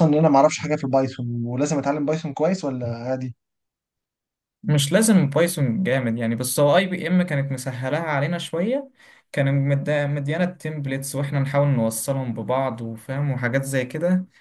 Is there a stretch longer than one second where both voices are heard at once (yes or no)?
no